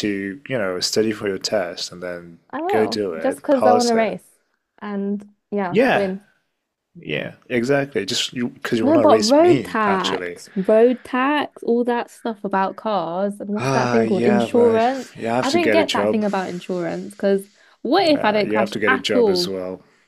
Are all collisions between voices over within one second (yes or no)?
no